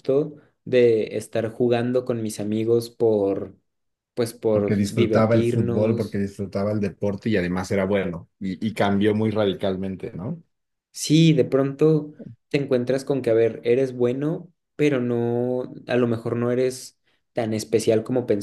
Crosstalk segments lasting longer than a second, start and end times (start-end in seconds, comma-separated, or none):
4.5-6.2